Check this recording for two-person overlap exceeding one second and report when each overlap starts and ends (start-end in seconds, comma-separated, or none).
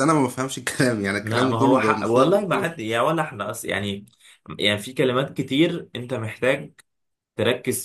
1.2-2.7